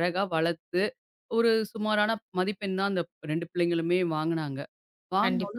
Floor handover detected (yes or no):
no